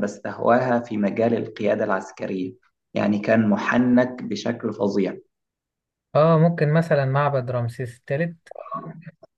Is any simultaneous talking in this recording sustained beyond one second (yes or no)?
no